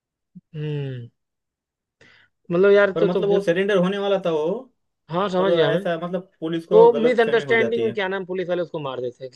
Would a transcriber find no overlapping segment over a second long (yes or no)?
no